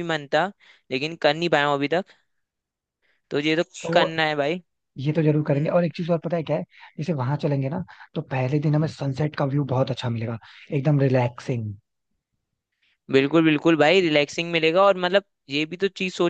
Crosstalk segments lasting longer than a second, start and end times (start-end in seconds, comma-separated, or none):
none